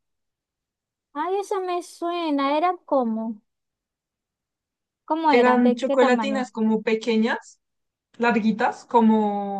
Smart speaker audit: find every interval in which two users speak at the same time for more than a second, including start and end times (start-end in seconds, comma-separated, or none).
5.3-6.5